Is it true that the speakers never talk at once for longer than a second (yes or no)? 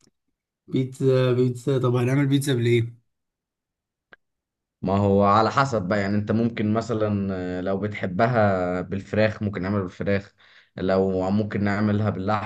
yes